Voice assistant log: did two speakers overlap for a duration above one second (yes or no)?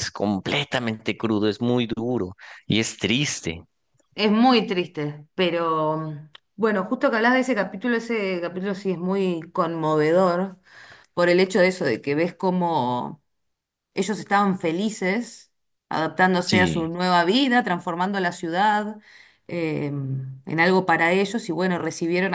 no